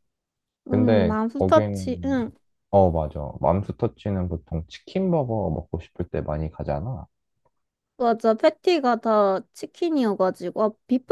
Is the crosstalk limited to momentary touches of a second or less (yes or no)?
no